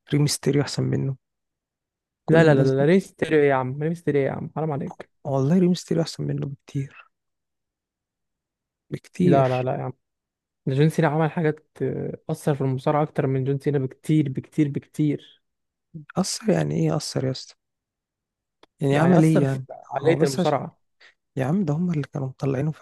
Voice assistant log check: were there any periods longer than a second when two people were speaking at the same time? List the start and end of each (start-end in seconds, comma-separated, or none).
18.9-20.6